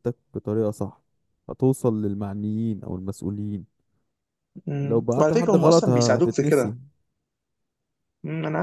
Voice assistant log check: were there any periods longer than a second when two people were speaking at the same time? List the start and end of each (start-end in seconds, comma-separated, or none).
4.8-6.8